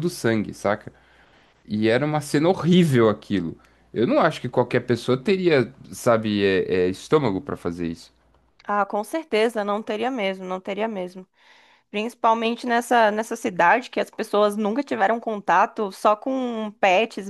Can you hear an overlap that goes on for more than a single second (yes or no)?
no